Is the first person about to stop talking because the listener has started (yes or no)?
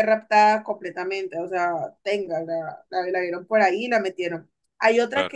no